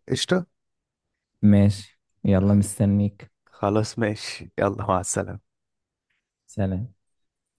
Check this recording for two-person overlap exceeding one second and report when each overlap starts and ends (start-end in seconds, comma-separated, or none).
none